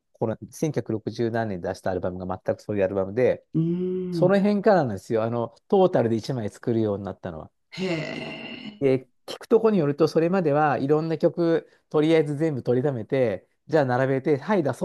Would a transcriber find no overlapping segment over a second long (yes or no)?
yes